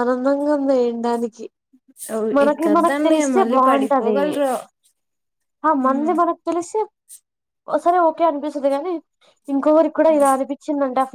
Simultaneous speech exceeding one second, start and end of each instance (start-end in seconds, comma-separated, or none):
2.5-4.2